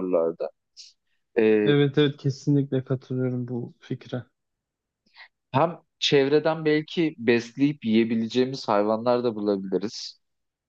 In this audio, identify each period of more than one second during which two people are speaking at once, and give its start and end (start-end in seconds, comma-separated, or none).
none